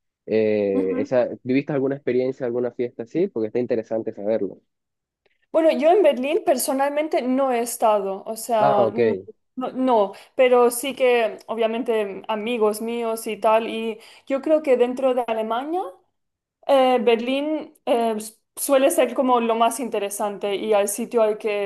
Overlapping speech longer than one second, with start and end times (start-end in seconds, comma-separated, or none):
none